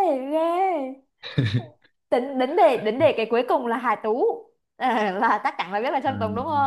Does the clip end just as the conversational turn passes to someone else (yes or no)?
yes